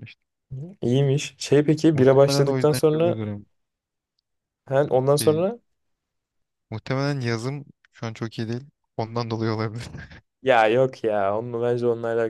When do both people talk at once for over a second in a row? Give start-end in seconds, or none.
1.9-3.2